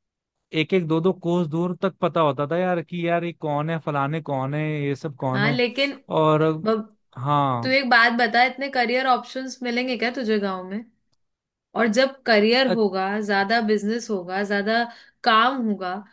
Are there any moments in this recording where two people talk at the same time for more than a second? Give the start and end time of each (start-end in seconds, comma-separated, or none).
none